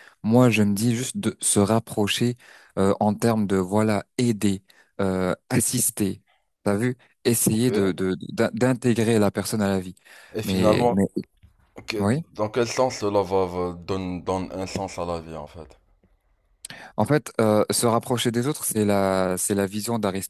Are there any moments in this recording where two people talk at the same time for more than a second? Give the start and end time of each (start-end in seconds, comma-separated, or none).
none